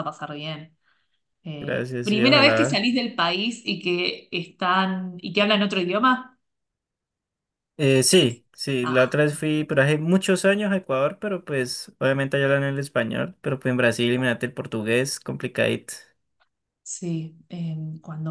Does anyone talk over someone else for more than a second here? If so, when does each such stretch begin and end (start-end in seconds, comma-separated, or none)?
1.6-2.8